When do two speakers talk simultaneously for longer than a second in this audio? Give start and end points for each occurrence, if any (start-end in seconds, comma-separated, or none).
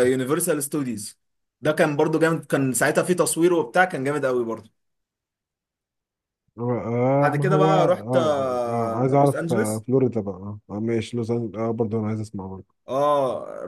7.2-9.8